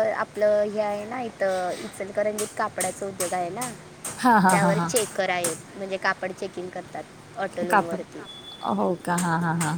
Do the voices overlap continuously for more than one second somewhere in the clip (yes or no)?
no